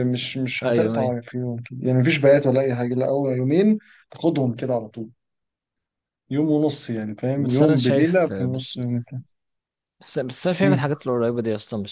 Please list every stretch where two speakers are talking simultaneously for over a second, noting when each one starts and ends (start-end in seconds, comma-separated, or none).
7.3-8.8